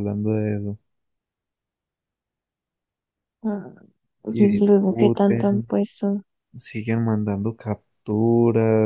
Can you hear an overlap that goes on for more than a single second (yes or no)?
yes